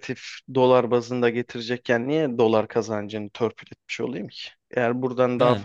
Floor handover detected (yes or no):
no